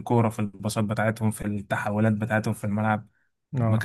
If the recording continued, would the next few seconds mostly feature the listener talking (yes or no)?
no